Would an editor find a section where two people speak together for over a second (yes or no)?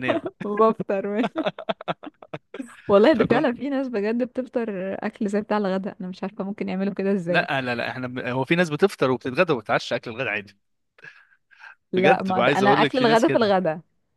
yes